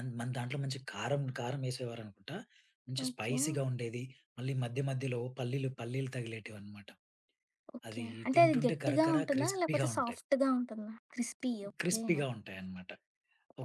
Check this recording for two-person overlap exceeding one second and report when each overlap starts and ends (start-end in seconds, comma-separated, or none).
7.9-10.2